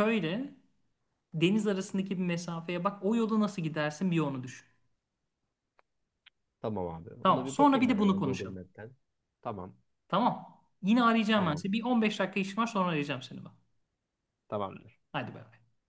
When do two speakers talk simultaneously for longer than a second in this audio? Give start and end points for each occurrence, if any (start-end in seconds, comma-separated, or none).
7.2-8.6